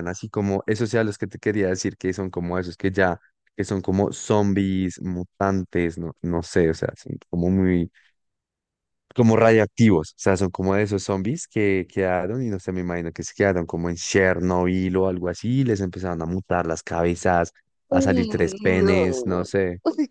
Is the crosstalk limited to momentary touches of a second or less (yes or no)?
no